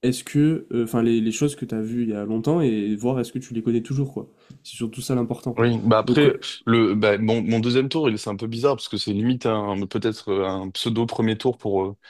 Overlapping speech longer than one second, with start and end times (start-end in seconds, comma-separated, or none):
none